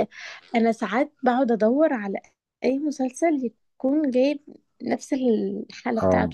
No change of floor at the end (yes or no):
no